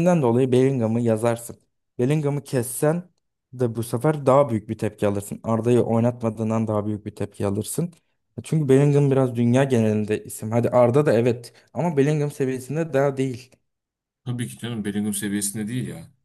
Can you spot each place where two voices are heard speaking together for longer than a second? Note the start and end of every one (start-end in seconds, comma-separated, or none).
none